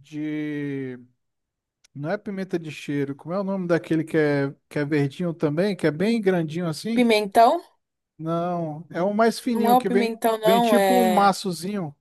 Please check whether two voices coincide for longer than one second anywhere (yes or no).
yes